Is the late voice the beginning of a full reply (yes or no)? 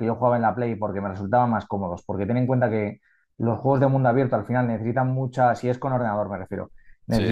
no